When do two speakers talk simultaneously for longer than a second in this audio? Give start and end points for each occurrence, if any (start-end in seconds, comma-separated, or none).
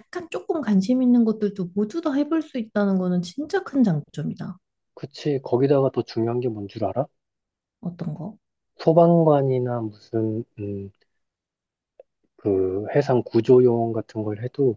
none